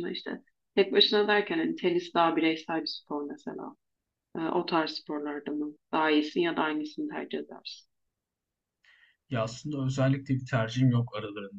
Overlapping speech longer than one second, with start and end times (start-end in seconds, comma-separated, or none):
none